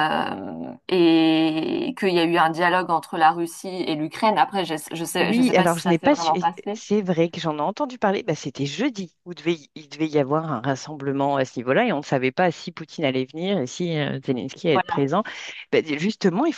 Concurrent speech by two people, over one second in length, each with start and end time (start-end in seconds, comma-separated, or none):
5.2-6.8